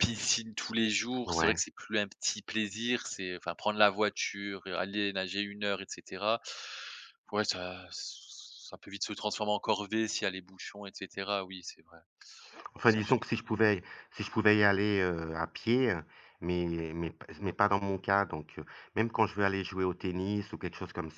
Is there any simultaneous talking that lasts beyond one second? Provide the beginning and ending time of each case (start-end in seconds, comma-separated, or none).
none